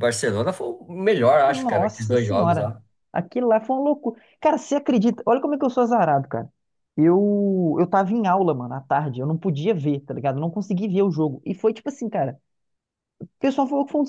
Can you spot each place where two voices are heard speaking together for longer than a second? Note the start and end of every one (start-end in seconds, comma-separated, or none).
1.5-2.7